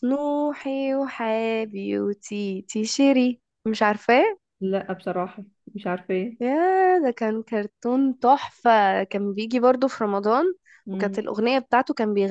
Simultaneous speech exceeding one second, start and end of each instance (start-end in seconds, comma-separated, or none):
none